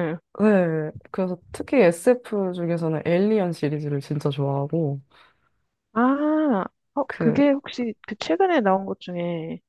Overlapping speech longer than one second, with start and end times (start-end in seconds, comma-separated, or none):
none